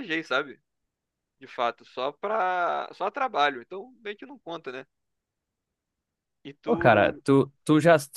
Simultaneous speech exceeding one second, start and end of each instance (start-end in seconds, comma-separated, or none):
none